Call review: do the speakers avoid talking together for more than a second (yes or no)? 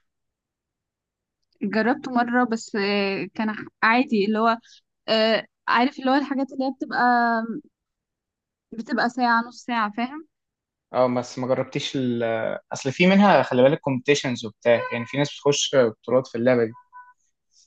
yes